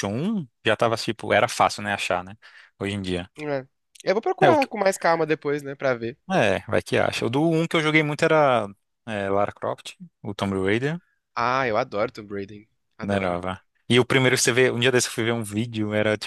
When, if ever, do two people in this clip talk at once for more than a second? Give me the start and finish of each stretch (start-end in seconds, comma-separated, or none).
none